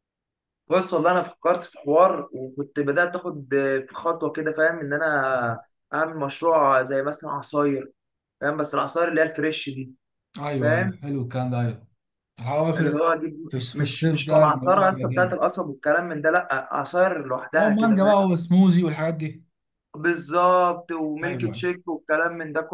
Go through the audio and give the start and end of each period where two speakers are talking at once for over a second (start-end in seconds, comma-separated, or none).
13.5-15.4